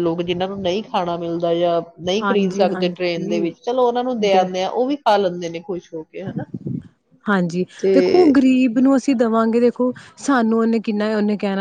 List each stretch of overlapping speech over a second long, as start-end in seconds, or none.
2.2-3.7